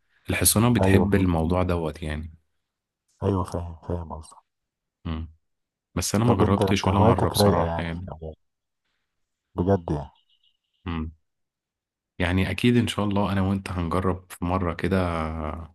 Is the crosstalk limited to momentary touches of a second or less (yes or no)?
no